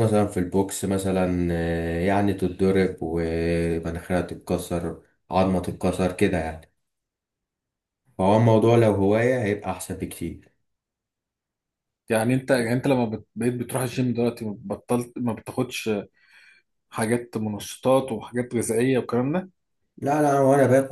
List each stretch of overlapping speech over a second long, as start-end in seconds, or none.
none